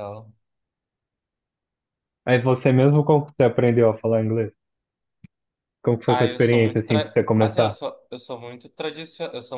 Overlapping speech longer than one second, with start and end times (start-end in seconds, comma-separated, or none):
6.0-7.8